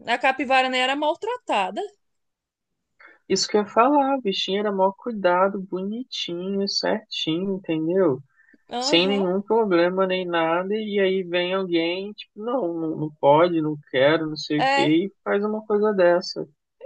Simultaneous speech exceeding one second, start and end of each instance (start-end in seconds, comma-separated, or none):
none